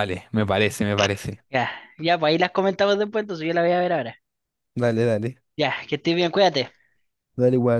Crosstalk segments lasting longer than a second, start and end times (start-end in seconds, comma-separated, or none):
none